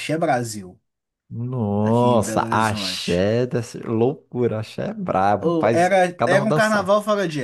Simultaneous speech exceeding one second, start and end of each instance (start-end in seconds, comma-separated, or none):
1.8-3.3, 5.4-6.9